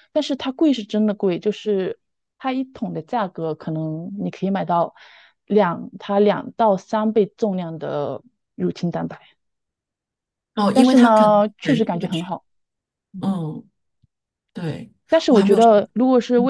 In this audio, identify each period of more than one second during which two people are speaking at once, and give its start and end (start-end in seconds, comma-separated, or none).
10.7-12.3